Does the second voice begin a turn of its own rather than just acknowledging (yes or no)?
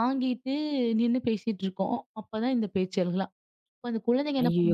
yes